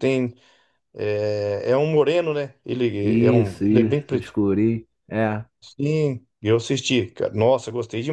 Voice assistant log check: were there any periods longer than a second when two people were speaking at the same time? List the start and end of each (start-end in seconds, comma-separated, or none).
3.0-4.4